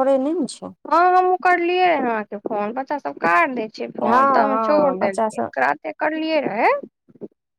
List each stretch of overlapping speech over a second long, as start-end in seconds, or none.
4.0-5.5